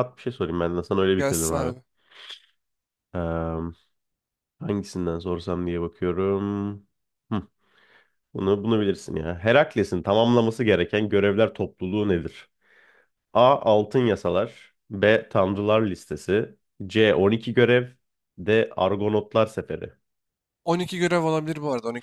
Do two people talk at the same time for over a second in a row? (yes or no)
no